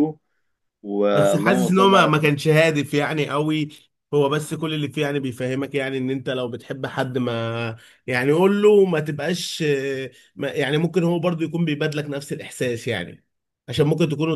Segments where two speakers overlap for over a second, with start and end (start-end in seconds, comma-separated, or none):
1.1-2.4